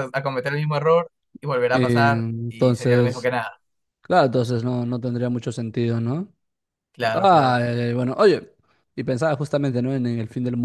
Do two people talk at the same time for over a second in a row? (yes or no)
yes